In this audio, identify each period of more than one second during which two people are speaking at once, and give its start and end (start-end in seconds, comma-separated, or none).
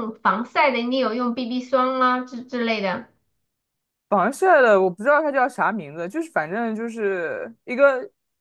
none